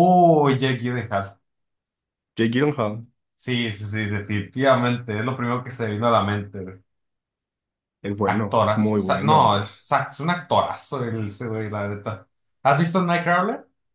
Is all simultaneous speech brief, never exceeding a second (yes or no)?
no